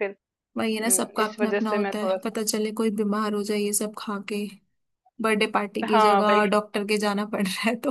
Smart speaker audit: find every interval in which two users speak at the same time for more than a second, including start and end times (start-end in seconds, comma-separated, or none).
0.8-2.4